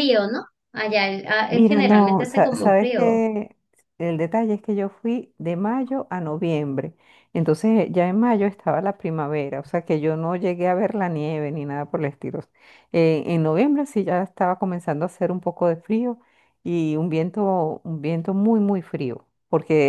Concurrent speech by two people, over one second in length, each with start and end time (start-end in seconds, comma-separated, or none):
1.5-3.2